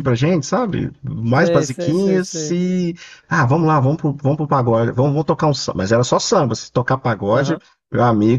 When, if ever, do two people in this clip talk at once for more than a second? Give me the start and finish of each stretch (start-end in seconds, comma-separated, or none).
1.3-2.6